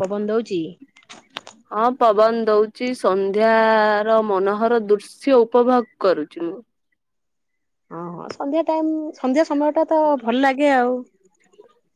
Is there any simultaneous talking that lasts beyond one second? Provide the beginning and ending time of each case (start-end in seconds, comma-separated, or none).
none